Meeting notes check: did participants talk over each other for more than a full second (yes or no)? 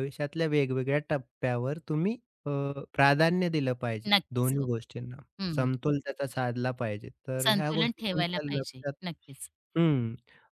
yes